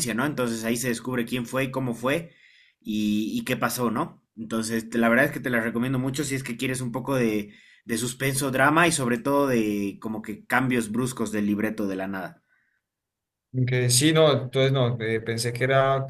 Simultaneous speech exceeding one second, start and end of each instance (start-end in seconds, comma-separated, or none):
none